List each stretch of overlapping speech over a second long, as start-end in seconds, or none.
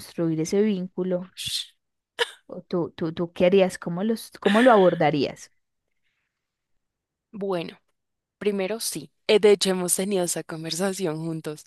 none